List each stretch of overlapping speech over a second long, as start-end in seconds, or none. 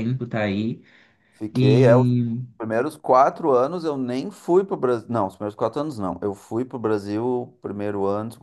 none